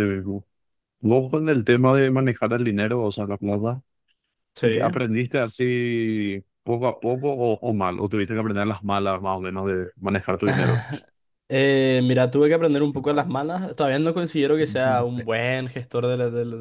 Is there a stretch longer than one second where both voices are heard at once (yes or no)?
no